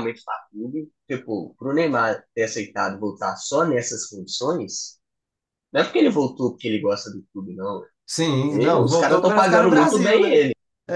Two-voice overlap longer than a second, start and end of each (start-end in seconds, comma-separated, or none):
8.5-10.4